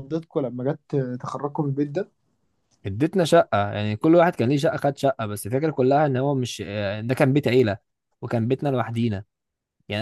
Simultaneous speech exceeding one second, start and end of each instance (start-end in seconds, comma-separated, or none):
none